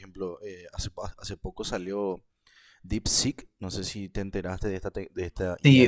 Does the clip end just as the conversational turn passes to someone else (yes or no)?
yes